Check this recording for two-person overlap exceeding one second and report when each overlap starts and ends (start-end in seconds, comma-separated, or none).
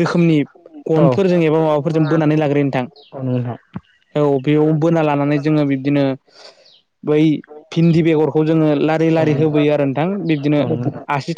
8.0-9.6